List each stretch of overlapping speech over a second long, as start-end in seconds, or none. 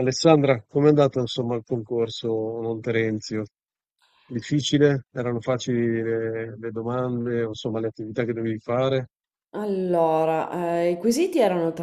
none